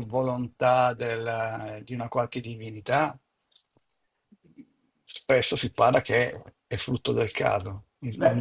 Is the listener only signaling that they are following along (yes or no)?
no